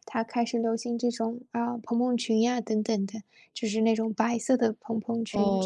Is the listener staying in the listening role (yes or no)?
no